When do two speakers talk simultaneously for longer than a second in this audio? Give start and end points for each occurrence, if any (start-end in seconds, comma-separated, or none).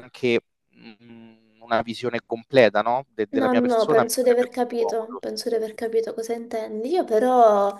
3.3-5.2